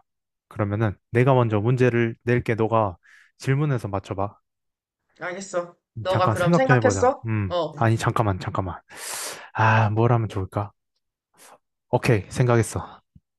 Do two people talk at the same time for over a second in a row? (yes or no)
yes